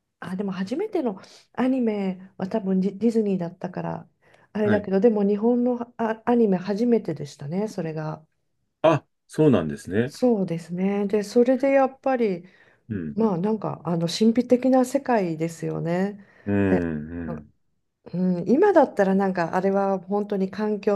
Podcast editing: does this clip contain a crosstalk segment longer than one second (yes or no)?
no